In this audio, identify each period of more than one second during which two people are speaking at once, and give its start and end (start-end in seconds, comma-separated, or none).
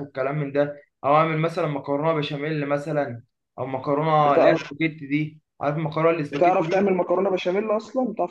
none